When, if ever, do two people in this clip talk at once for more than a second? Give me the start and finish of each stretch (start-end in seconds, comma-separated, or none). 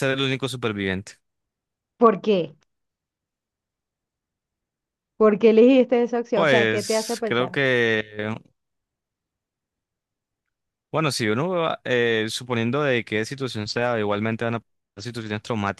6.3-7.6